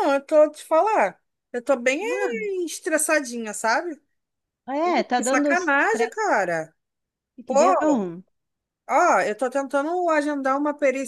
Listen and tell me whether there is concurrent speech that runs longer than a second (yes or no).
yes